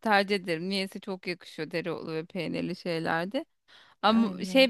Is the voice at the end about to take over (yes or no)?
no